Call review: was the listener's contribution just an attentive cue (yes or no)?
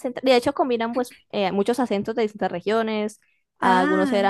yes